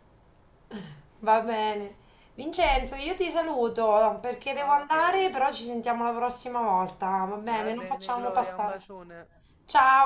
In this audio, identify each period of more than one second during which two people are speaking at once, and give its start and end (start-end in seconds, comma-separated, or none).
7.5-8.8